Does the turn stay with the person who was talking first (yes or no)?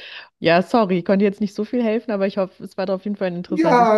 no